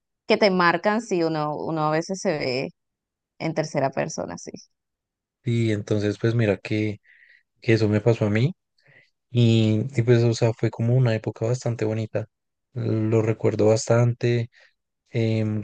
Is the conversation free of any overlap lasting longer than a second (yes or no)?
yes